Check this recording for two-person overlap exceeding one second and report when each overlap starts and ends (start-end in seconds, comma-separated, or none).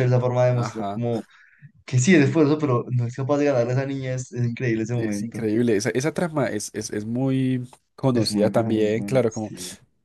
8.1-9.5